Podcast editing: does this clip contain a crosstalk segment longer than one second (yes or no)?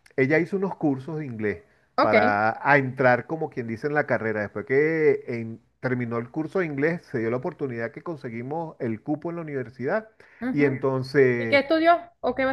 no